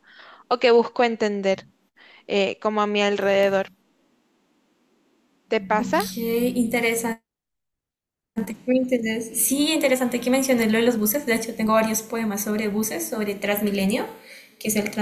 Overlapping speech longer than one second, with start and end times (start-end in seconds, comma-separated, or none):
none